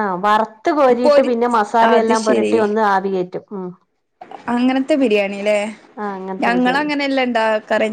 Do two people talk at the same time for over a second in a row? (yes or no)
no